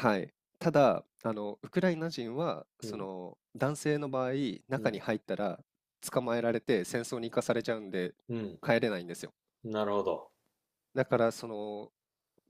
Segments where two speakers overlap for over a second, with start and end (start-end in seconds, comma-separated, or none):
none